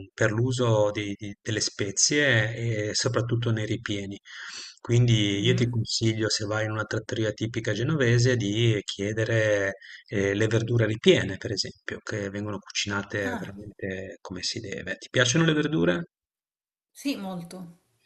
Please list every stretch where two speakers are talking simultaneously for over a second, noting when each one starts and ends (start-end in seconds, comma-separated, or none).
none